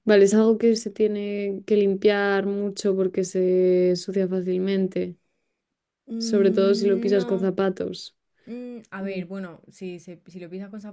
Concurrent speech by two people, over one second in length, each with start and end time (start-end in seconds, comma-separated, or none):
6.2-7.5